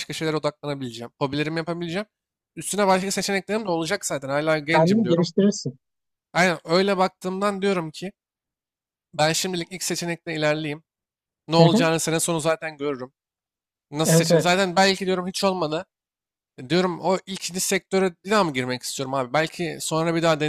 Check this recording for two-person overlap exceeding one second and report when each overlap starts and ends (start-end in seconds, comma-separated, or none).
none